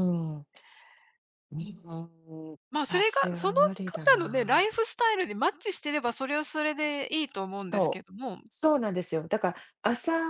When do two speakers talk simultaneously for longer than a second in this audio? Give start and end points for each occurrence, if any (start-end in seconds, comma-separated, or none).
2.7-4.7